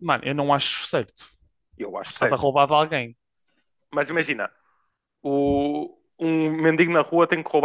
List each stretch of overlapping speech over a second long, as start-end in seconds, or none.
none